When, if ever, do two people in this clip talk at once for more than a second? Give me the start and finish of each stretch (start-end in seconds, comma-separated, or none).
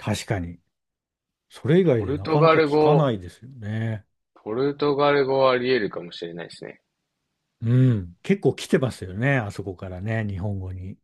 1.8-3.1